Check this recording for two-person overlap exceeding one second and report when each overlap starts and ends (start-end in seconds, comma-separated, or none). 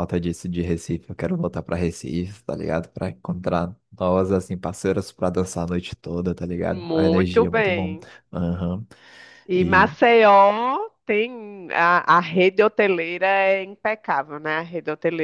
6.6-8.0